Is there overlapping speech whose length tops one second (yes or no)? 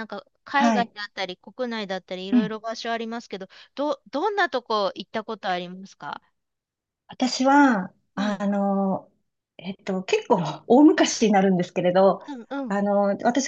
no